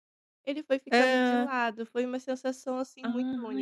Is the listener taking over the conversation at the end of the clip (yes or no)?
yes